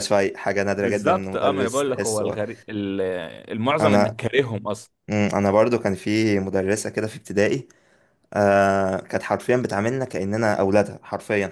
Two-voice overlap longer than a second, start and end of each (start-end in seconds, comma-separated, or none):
0.8-2.4